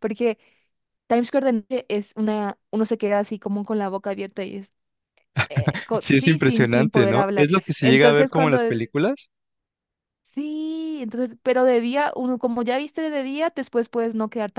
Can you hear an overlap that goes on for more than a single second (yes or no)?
yes